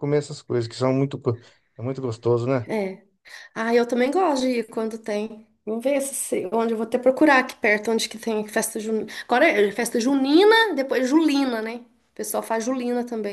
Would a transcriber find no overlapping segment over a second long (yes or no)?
yes